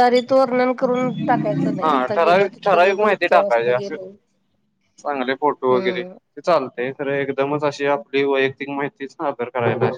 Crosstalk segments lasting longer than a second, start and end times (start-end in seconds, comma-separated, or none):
1.8-3.9